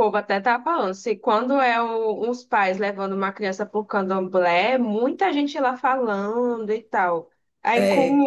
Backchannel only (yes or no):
yes